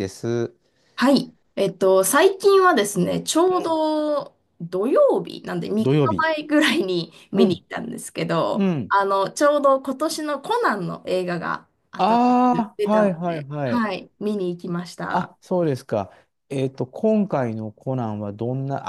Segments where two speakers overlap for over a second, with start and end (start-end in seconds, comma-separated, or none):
12.0-13.8